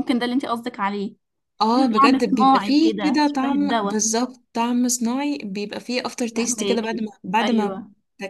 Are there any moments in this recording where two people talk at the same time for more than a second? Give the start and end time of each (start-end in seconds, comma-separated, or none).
1.7-4.0, 6.3-7.8